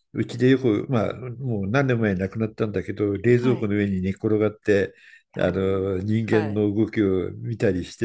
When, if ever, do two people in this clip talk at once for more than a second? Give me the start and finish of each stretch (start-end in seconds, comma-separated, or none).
5.4-6.6